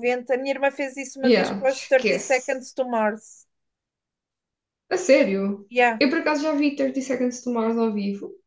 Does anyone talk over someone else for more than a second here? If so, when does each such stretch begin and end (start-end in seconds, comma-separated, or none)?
1.2-2.6